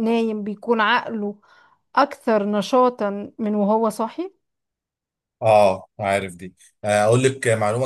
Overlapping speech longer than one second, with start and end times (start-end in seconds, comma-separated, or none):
none